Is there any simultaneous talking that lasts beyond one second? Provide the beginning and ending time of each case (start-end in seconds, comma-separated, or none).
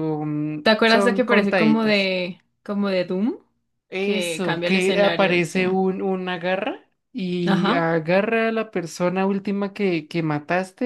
0.6-2.1, 4.0-5.6